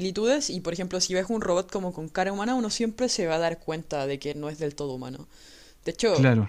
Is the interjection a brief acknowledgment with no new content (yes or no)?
yes